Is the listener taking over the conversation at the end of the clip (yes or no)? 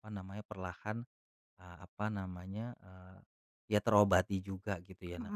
no